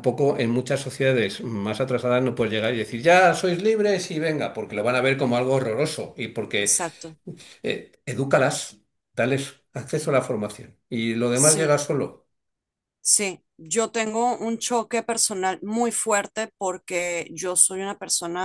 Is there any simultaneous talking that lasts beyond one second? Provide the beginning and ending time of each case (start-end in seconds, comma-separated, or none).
none